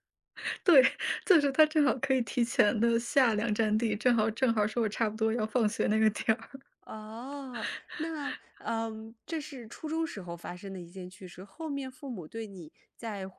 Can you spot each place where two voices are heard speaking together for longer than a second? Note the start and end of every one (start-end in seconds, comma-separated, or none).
none